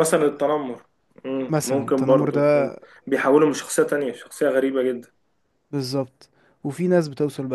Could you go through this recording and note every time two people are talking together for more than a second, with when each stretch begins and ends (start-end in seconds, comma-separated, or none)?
1.5-2.7